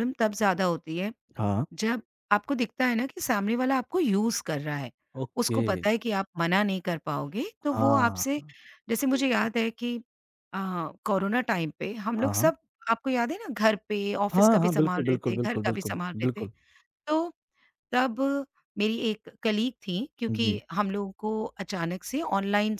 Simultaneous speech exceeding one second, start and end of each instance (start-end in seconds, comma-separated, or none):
14.3-16.5